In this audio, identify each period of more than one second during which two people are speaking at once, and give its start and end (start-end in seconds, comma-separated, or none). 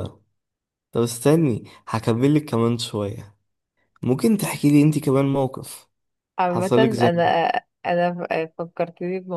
none